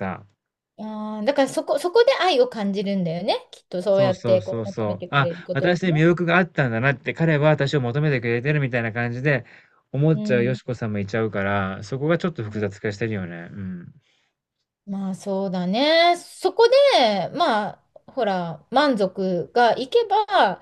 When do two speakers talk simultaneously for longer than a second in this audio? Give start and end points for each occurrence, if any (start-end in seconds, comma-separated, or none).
3.9-6.0